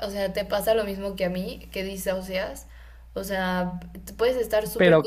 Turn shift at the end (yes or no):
no